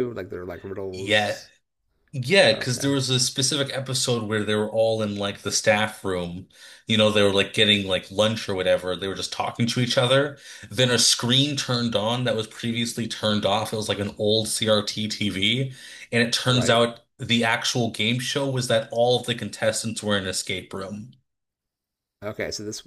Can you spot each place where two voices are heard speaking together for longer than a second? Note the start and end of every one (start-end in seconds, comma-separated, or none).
none